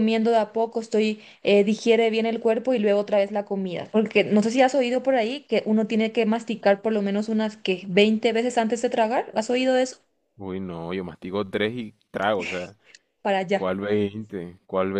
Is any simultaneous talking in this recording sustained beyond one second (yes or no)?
no